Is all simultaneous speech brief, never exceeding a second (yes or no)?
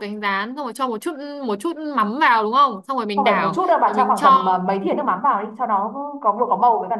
no